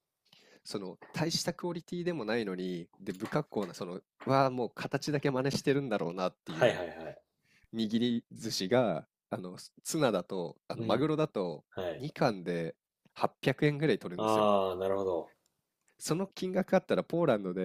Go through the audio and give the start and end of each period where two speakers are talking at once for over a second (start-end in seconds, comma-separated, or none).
none